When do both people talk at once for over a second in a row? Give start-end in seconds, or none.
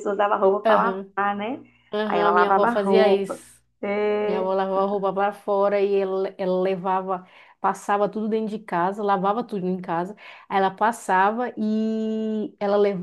2.0-3.4